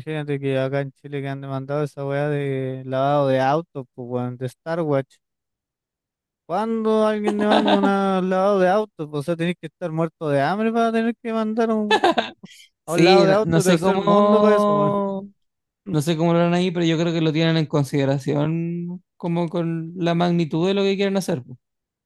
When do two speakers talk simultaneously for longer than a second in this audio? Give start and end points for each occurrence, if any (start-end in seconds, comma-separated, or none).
12.9-15.0